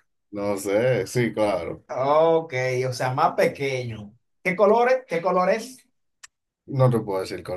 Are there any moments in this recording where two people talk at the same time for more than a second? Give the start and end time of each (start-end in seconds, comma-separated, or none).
none